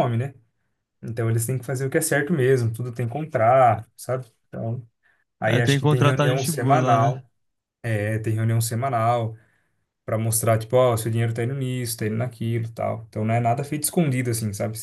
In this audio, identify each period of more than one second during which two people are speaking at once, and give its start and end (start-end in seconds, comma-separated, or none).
5.5-7.2